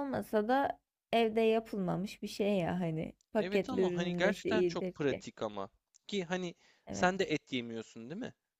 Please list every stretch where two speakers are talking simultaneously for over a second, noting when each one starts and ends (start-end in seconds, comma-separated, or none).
3.4-5.2